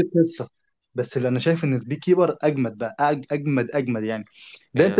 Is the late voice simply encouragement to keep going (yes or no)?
yes